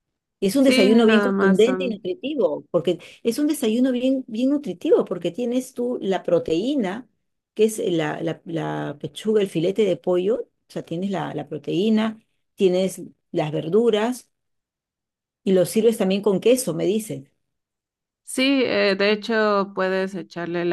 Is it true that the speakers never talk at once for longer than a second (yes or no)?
no